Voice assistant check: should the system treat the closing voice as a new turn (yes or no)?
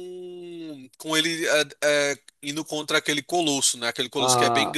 yes